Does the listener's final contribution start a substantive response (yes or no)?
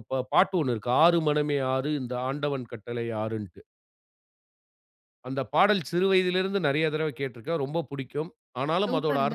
no